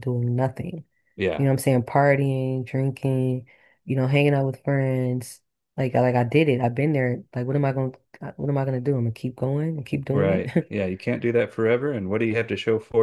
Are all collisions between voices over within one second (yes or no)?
yes